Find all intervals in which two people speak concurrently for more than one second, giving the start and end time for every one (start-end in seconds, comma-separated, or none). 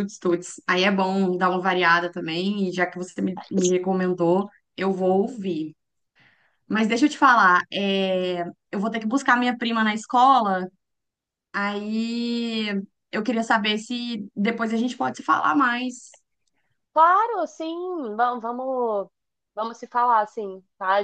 none